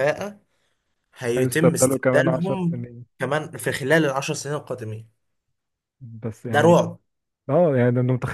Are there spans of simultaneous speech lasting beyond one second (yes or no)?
yes